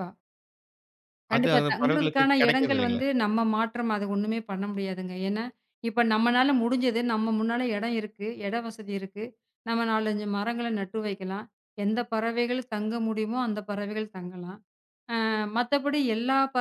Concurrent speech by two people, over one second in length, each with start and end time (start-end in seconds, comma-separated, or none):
1.4-3.0